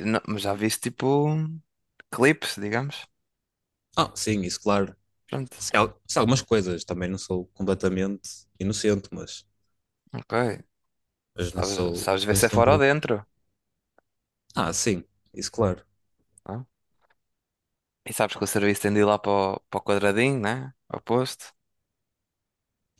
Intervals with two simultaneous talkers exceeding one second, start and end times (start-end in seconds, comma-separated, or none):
11.4-12.8